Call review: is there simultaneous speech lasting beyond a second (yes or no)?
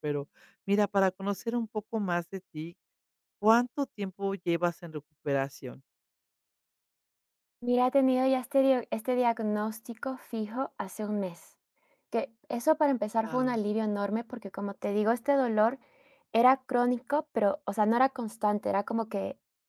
no